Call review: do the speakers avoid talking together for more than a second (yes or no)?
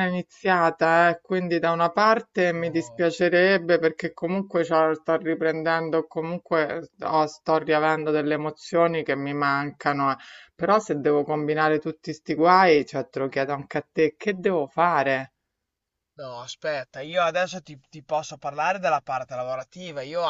yes